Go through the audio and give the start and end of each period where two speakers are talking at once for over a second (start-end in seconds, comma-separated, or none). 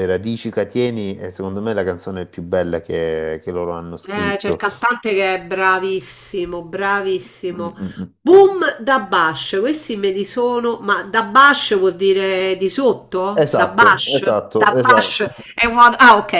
13.3-15.3